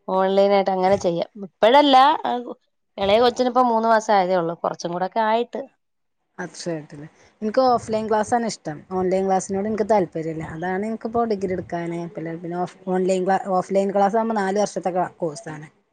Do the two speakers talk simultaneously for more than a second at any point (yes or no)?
no